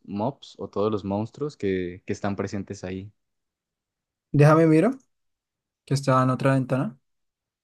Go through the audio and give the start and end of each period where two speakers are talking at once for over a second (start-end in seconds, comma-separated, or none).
none